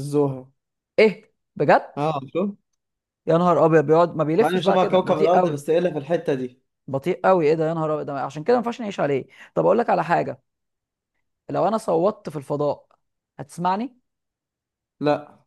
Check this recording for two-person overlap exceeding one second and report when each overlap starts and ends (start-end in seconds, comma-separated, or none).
4.4-5.6